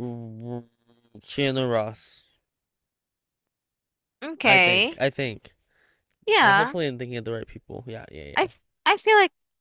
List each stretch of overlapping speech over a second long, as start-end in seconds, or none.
none